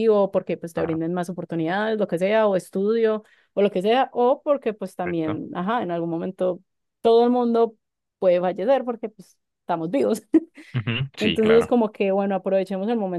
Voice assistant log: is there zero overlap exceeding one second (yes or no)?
yes